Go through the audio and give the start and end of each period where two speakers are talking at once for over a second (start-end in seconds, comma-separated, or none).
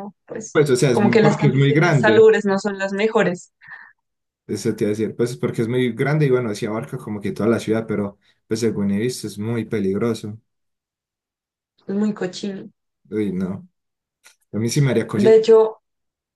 0.5-2.3